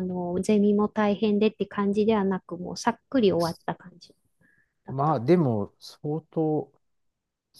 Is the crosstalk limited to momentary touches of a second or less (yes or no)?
yes